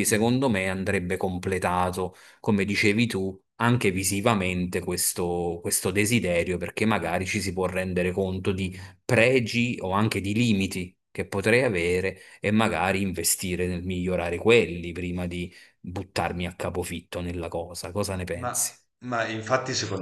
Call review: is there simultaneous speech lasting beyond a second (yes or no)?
no